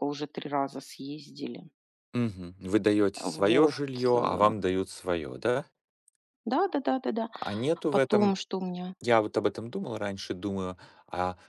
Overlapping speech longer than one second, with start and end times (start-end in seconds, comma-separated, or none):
none